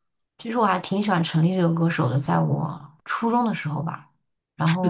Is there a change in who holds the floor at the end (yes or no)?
yes